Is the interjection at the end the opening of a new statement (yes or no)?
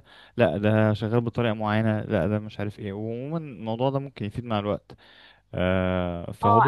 yes